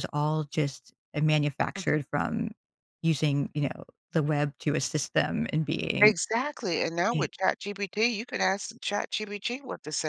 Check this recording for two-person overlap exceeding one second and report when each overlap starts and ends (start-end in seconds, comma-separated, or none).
none